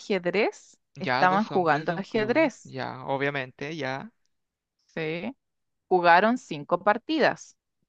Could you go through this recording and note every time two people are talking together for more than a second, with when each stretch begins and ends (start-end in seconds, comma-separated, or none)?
1.0-2.8